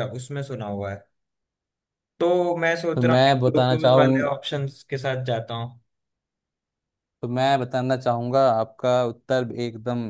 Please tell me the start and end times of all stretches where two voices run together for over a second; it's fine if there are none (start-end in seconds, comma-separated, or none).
3.0-4.6